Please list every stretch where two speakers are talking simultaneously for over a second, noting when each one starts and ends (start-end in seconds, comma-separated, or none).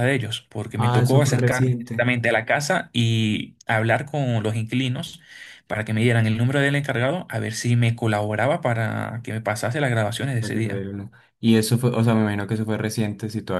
0.8-2.1